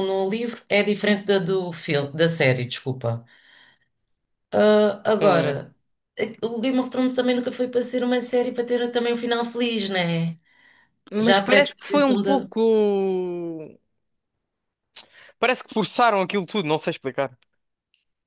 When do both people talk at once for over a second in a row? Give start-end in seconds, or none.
11.2-12.5